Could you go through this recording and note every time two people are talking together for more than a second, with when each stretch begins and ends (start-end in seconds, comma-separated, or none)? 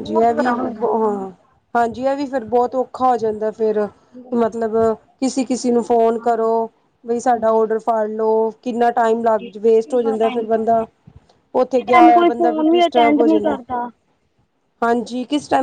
11.6-13.6